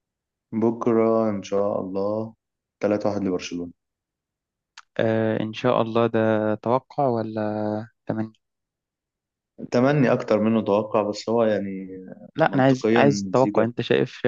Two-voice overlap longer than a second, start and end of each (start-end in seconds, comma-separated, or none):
12.4-13.7